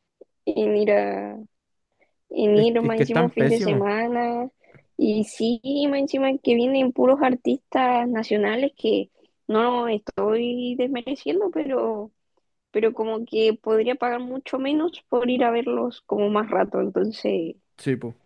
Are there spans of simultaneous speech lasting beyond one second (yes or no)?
yes